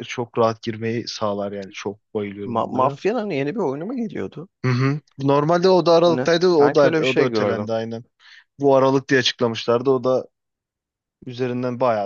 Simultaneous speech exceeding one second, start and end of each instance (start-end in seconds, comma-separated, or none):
6.0-7.7